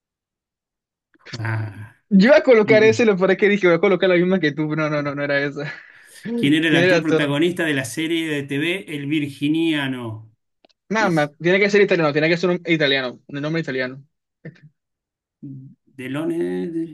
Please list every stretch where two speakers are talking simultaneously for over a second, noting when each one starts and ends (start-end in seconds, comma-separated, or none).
none